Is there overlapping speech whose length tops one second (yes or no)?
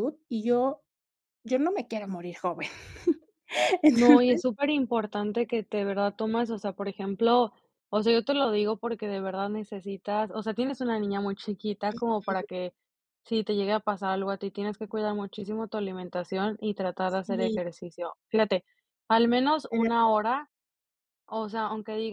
no